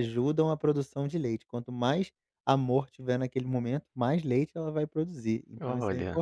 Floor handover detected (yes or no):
no